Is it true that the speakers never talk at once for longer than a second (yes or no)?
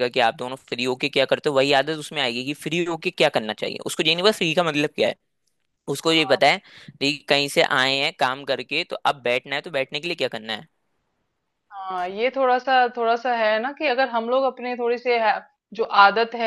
yes